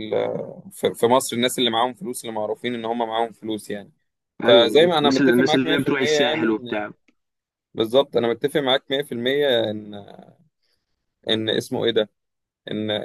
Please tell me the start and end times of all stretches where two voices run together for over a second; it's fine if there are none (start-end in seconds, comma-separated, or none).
4.4-6.8